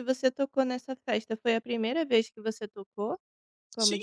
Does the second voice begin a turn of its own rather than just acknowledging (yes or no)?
yes